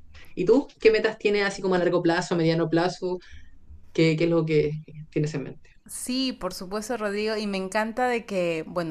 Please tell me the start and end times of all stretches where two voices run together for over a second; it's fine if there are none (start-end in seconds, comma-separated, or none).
none